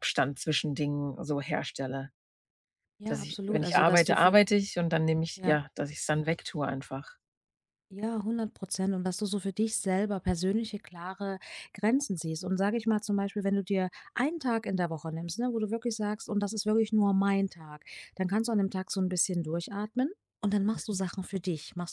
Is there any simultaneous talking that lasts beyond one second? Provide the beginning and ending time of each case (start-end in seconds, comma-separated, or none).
3.0-4.4